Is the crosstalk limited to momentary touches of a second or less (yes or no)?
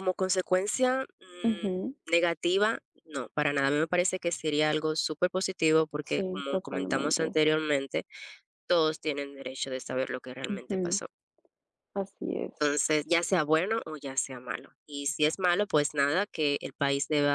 no